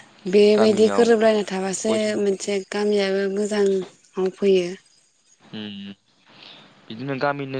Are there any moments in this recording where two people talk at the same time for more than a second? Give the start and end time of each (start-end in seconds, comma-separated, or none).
none